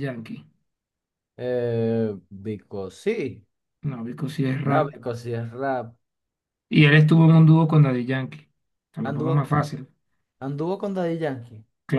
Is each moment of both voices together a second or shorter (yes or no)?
yes